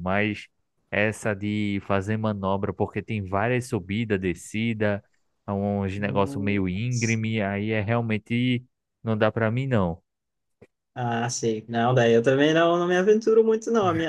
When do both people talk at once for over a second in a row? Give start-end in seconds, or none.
6.0-7.2